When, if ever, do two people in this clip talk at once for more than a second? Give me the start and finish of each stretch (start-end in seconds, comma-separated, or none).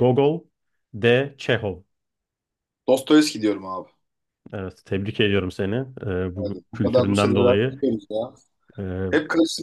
6.4-7.8